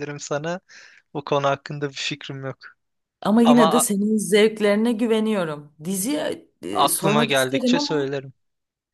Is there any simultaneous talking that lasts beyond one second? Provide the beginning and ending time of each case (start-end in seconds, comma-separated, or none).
6.7-8.1